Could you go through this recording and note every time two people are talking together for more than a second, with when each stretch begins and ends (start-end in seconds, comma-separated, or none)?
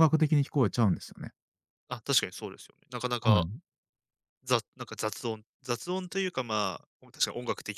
none